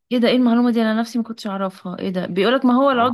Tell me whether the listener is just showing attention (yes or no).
yes